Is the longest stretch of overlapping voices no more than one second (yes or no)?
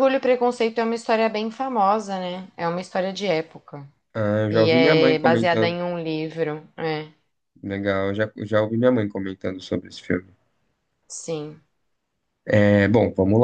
no